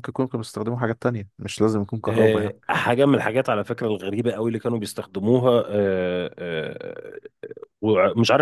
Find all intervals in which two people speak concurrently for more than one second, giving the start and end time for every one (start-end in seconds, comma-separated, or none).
none